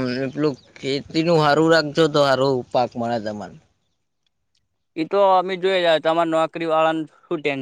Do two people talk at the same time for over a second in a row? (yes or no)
no